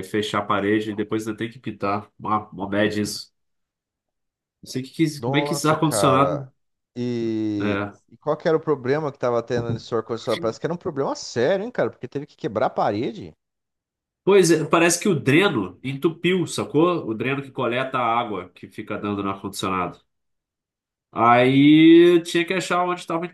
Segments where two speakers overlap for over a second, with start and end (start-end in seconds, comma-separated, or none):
5.2-6.5